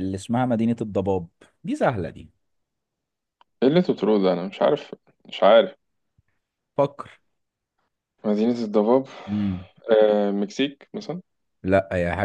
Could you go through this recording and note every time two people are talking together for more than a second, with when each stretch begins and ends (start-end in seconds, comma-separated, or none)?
none